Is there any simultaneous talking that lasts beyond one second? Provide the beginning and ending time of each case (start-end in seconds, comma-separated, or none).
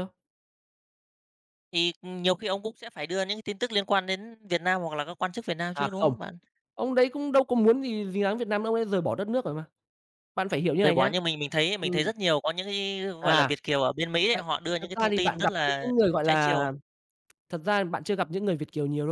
14.3-16.7